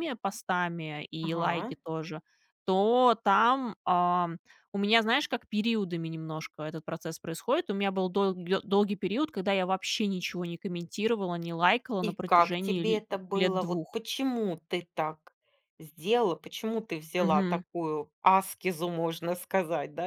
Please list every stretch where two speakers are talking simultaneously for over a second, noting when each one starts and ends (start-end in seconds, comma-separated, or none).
12.0-14.0